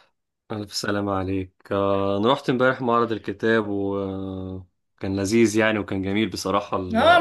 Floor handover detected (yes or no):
yes